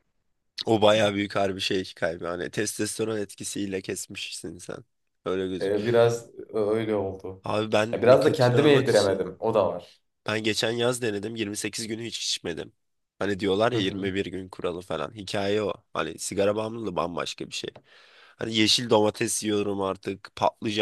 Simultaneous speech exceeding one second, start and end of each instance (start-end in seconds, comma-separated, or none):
7.9-9.3